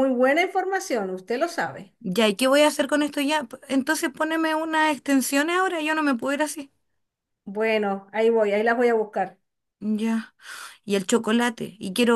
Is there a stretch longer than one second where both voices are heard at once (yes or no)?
no